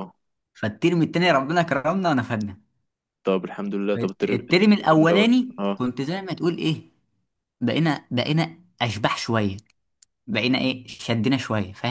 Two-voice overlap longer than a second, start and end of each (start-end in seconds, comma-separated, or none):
4.0-5.8